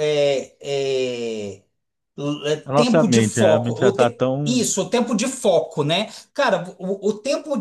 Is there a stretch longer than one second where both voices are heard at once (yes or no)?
yes